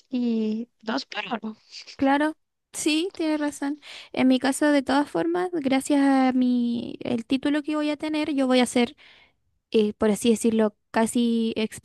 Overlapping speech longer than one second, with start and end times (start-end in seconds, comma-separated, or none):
none